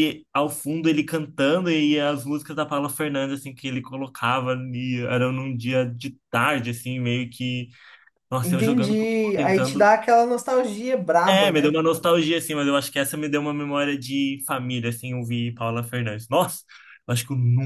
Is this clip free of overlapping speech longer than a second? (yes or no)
no